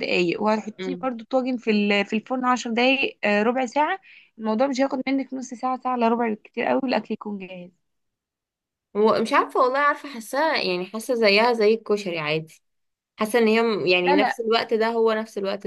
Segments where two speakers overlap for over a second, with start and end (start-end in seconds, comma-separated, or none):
none